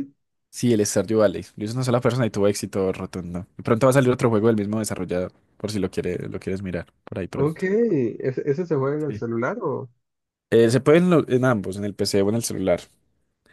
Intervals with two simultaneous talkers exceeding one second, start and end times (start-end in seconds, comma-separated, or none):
none